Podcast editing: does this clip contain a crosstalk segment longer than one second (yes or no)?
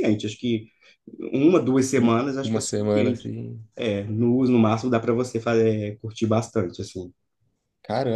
yes